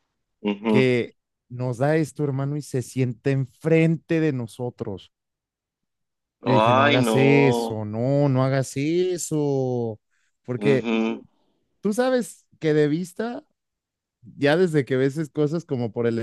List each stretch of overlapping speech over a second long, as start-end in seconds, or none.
6.4-7.8